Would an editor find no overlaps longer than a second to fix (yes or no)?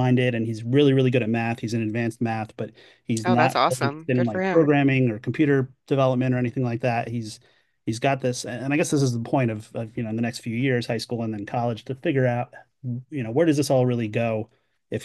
no